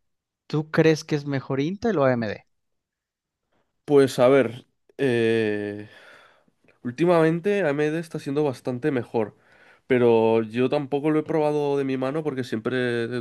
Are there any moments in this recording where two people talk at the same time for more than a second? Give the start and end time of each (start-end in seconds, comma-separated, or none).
none